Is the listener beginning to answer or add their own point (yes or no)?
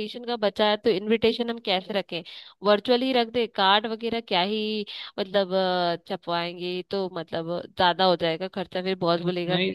no